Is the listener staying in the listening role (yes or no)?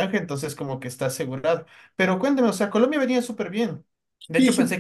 yes